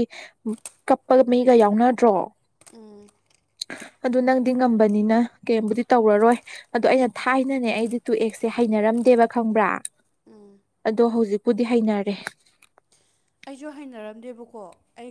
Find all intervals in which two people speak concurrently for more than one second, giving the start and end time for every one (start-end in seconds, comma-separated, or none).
none